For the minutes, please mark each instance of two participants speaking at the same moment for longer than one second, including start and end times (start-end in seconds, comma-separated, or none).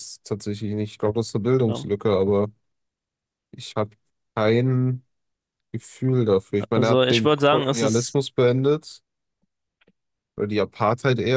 6.7-8.2